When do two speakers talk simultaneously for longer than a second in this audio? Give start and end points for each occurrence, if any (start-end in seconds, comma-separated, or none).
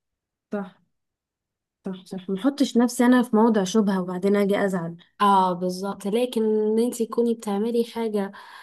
none